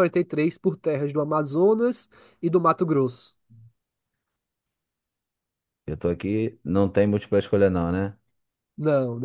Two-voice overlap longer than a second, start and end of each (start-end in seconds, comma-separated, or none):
none